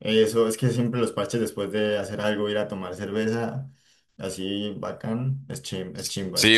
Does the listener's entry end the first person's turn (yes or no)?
yes